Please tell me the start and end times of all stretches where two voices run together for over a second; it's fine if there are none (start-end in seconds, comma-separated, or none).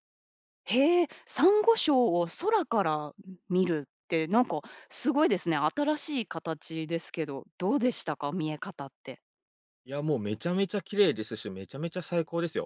none